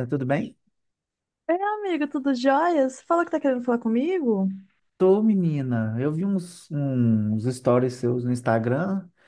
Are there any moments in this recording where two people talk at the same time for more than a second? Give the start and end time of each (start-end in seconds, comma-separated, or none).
none